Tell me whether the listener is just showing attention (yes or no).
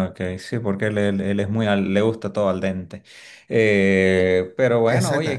yes